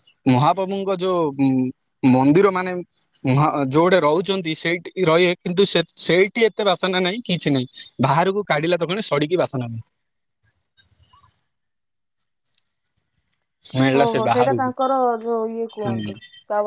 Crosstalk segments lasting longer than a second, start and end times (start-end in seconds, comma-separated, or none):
14.0-16.1